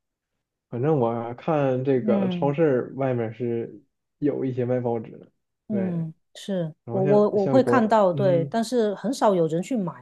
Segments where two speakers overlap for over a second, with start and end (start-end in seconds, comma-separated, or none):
6.8-8.5